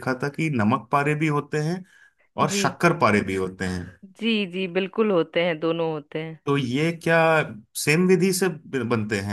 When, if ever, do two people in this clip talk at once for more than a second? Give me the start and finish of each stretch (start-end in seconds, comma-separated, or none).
none